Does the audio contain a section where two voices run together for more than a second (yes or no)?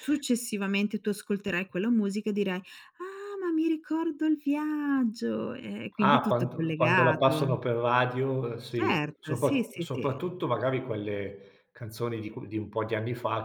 yes